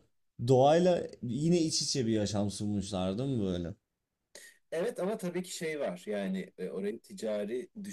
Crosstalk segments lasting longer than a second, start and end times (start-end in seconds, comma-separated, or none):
none